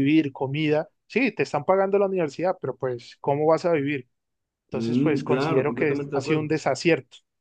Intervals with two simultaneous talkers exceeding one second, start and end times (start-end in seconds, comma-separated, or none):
4.7-6.6